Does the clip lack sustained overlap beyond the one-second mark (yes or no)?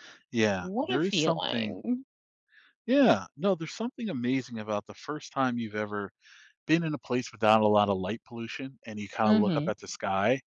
no